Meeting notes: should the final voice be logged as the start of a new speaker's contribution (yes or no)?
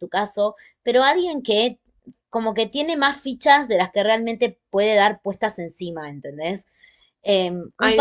no